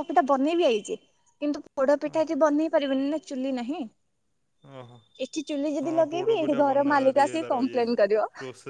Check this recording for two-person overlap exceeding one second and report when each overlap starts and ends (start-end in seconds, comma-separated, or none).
5.8-7.8